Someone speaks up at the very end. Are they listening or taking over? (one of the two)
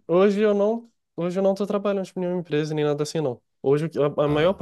listening